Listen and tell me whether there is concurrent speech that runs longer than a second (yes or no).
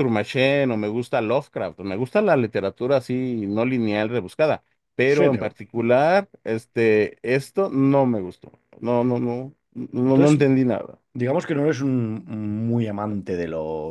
no